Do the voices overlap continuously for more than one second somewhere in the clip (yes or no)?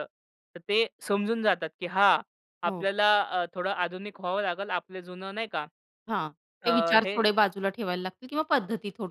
no